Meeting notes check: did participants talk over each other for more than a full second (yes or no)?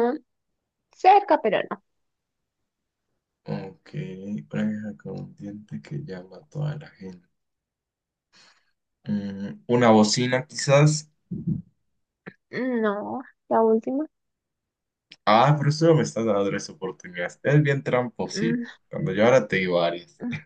no